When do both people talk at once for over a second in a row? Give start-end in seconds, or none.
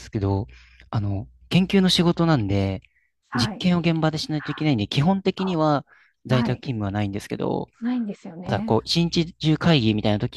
none